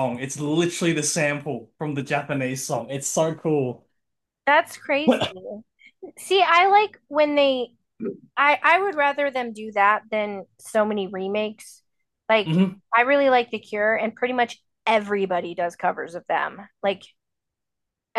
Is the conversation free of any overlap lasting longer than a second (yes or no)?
yes